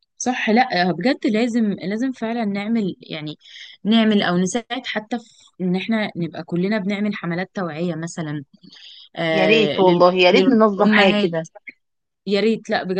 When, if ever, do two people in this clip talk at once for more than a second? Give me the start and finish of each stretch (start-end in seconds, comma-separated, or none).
9.3-11.3